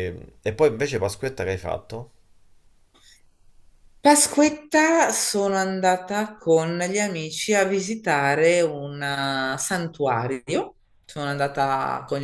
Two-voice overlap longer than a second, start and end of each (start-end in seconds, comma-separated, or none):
none